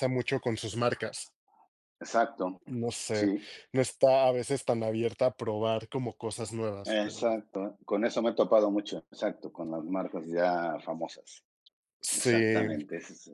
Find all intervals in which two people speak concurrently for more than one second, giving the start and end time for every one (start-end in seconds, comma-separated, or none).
none